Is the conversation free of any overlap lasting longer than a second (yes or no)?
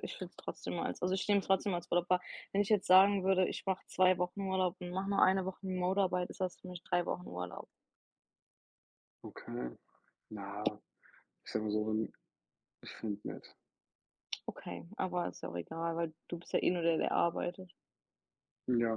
yes